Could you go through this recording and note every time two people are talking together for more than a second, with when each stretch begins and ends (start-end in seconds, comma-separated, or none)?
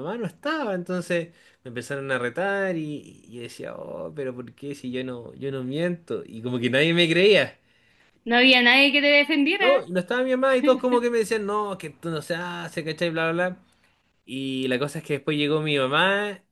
none